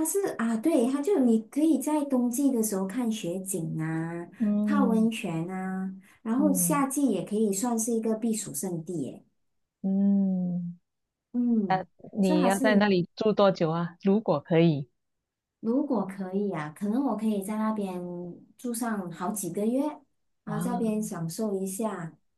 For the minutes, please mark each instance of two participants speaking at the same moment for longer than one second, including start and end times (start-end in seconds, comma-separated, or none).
none